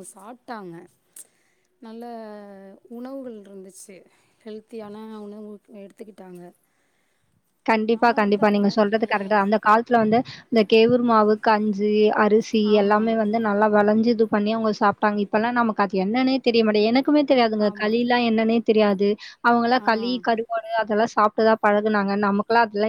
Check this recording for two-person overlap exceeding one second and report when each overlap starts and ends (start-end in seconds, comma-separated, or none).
none